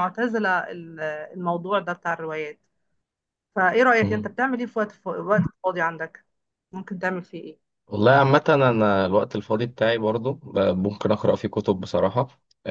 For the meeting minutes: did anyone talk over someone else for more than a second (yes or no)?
no